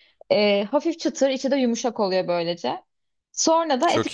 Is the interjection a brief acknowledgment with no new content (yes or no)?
yes